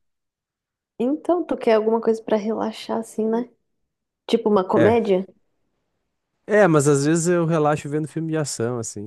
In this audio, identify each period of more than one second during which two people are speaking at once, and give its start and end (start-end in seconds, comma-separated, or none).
none